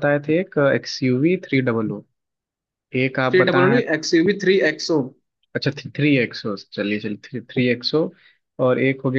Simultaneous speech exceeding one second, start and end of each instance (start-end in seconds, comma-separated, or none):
none